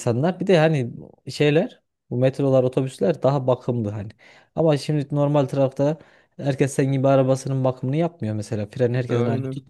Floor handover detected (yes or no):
no